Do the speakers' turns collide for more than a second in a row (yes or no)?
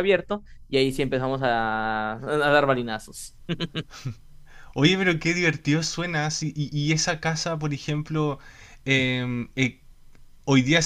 no